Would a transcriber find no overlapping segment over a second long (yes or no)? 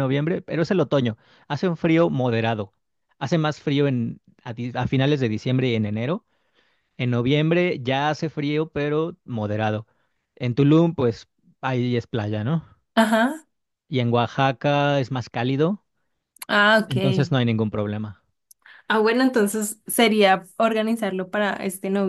yes